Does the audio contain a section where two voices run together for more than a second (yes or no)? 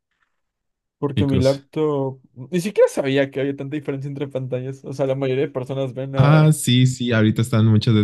no